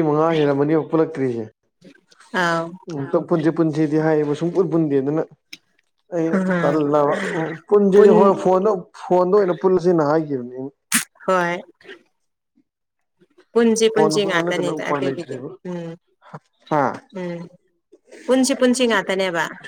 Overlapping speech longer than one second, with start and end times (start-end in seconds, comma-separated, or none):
13.9-15.5